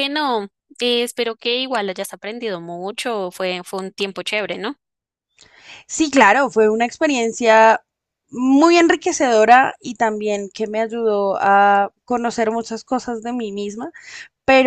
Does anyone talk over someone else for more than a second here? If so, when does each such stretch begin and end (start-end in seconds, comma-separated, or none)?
none